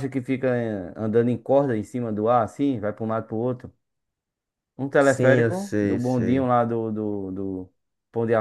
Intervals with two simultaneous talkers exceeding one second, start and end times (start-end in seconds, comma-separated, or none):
5.0-6.5